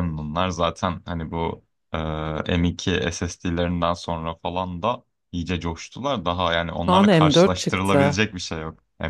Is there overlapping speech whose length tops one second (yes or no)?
yes